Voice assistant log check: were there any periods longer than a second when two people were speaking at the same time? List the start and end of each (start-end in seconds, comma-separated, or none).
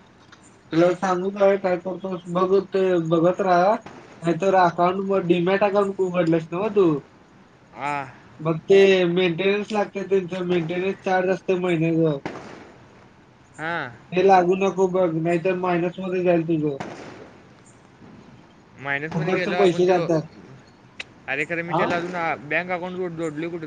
none